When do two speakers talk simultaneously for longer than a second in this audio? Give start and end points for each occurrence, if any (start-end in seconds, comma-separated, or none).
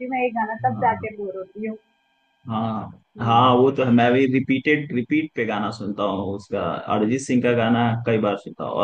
none